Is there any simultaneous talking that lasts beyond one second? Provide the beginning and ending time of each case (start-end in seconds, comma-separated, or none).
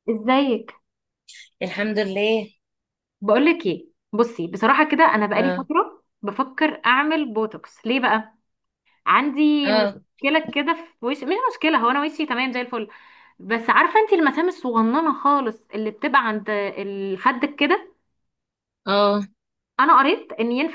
none